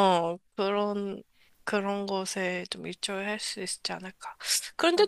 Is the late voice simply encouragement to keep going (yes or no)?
yes